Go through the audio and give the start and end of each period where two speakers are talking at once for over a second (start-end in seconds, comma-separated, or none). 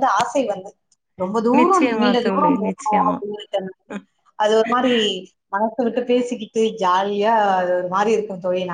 1.6-3.2